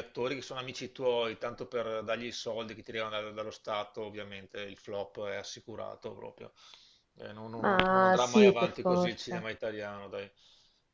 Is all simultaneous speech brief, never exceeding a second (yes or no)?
no